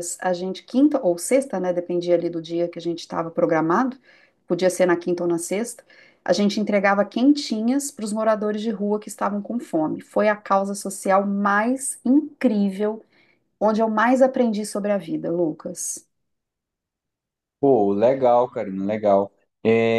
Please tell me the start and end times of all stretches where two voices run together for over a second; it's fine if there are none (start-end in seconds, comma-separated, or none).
none